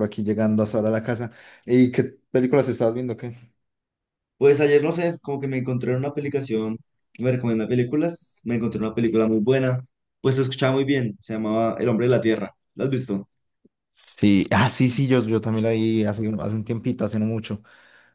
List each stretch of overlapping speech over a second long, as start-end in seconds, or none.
none